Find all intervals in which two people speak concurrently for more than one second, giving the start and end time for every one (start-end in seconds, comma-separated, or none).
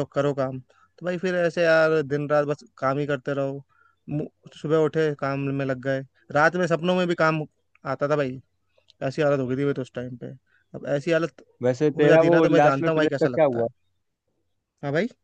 12.0-13.7